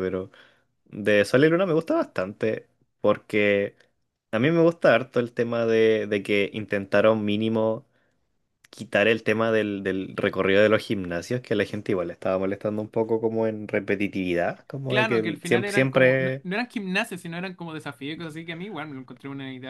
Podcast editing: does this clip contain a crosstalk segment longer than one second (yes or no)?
yes